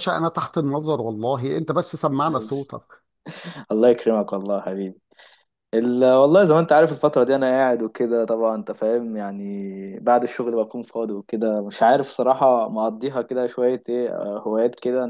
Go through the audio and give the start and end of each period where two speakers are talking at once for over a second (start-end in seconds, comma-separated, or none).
none